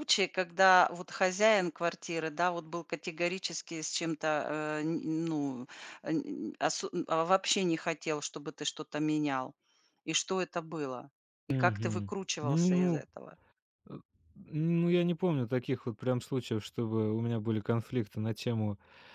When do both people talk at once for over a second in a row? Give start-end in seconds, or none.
11.5-13.0